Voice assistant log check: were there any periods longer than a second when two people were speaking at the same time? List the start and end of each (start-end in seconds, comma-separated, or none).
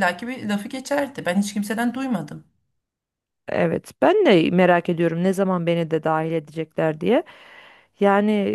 none